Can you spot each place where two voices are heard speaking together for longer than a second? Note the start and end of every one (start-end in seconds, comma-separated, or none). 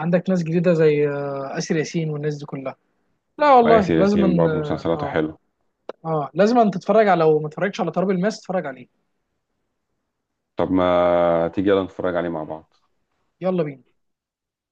3.6-5.2